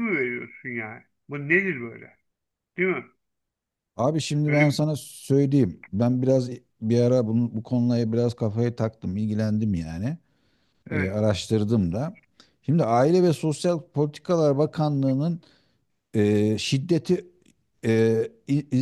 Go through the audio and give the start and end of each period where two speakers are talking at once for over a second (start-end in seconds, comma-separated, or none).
none